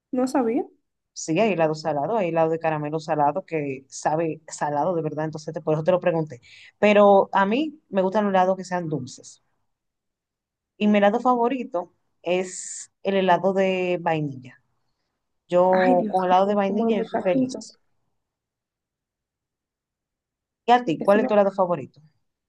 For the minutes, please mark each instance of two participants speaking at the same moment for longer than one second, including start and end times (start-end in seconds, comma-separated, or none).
15.7-17.6